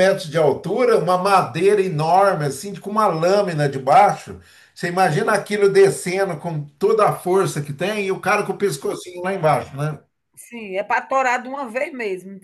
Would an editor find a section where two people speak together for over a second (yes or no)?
no